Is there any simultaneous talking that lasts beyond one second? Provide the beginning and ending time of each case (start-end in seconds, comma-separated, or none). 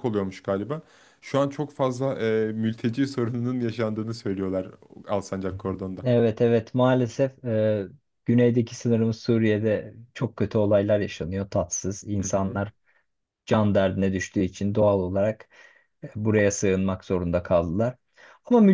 none